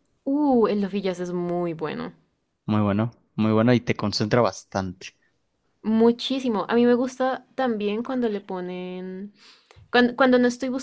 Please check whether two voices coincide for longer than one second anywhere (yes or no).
no